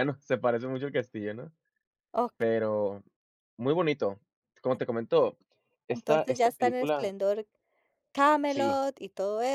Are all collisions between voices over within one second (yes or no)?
no